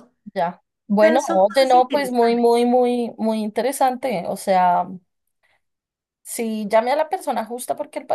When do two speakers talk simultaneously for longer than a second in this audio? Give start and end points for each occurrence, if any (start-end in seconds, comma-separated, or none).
1.0-2.6